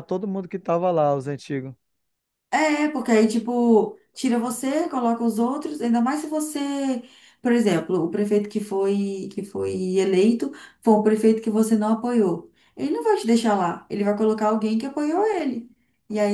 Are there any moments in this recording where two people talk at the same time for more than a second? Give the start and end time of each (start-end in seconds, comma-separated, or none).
none